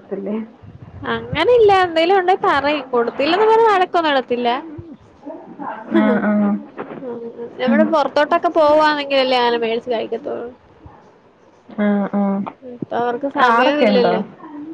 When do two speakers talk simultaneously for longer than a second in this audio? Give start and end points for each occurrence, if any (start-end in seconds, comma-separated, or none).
none